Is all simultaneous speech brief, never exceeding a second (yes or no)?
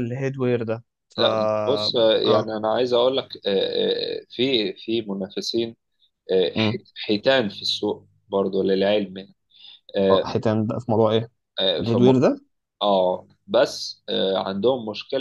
no